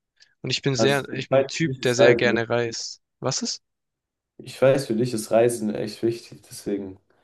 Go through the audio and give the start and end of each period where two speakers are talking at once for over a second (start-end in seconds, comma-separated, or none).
0.8-2.4